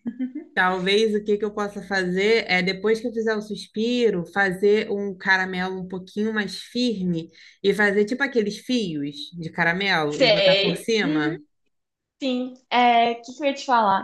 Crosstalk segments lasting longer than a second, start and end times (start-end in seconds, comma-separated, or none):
10.1-11.3